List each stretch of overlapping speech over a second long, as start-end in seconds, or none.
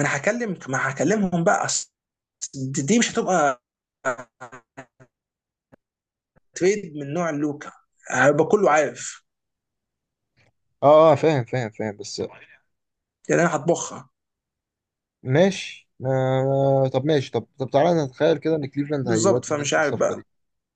19.0-20.3